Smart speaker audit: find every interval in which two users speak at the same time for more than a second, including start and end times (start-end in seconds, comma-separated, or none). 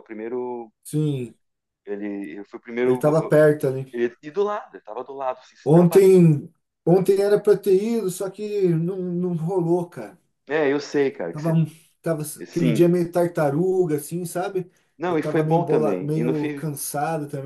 15.1-16.7